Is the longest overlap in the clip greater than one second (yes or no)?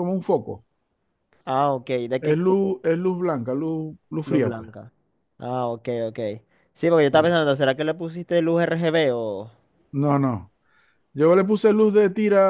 no